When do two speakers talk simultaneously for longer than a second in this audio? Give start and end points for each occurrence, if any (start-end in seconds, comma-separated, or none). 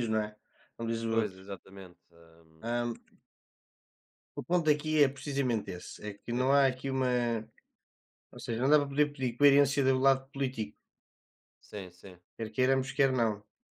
none